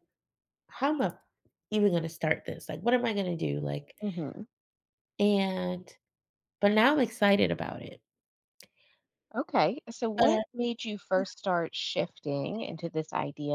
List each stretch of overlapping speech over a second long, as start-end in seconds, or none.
none